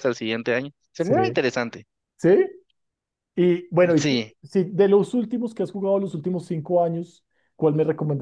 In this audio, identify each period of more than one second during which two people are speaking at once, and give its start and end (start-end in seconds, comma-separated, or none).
none